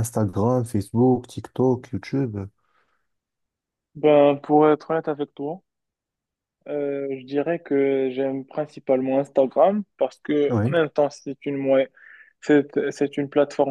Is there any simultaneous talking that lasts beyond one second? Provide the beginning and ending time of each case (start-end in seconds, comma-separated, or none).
none